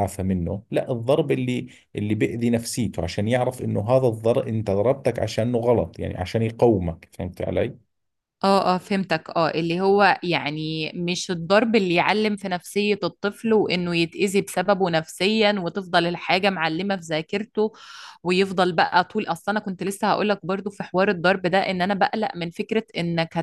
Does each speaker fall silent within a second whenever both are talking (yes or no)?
yes